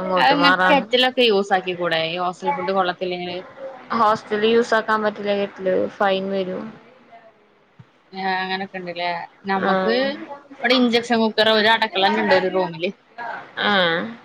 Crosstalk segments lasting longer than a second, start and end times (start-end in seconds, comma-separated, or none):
none